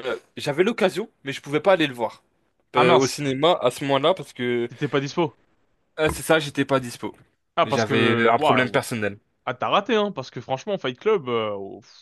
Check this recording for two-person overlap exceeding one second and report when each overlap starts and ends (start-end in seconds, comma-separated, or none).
7.6-8.9